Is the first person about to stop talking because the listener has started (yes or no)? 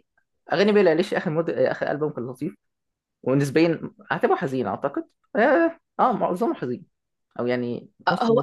yes